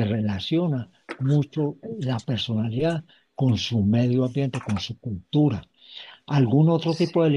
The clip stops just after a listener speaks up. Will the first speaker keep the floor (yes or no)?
yes